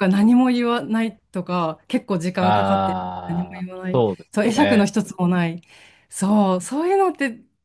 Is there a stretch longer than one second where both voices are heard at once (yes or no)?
yes